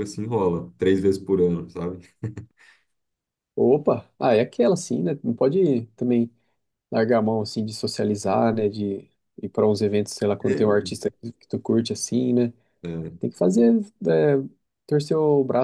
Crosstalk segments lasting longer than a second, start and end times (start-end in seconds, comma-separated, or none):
none